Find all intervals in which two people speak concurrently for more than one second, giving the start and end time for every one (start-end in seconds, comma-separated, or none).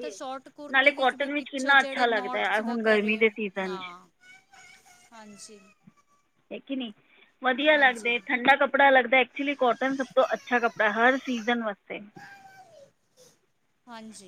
0.7-3.8